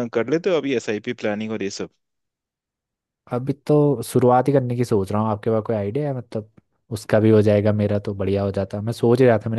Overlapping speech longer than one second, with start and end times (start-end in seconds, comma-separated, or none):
none